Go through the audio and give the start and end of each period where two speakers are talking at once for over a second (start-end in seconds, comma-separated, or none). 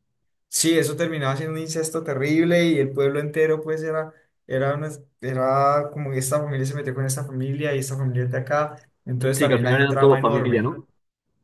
9.3-10.8